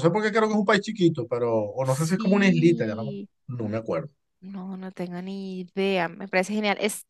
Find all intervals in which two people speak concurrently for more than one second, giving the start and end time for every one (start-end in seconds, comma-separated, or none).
1.8-3.3